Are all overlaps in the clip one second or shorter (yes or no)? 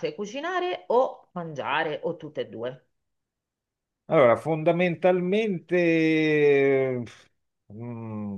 yes